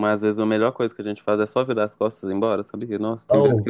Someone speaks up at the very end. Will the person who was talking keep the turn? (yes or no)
no